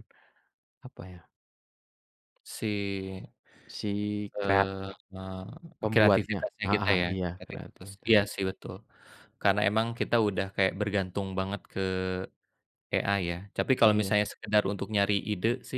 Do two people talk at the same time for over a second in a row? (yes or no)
yes